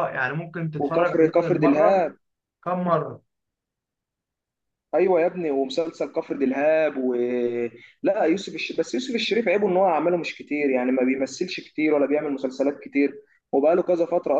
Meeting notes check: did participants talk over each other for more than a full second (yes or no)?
yes